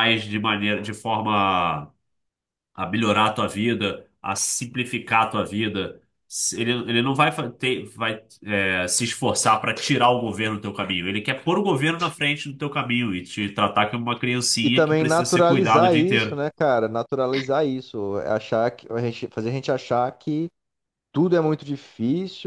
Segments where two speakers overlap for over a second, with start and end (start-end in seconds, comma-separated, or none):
14.6-16.4